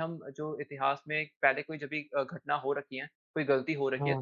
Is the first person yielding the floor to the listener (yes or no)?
no